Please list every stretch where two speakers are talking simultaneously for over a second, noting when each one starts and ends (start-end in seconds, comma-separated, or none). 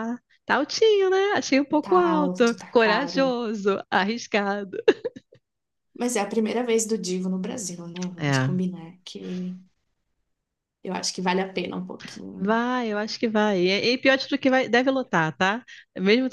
1.8-3.3